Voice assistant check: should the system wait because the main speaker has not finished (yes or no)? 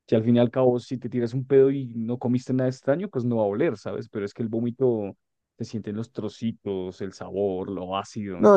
no